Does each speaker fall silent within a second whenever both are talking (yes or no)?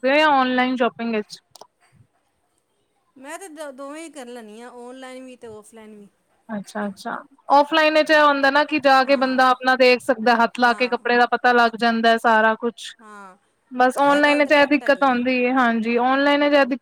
no